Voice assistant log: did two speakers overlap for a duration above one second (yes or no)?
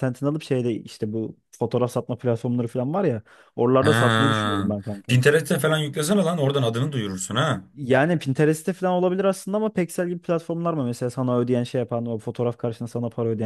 no